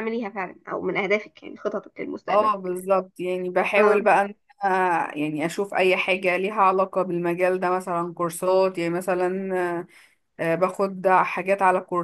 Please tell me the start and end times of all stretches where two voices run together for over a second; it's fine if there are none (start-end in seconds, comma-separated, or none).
none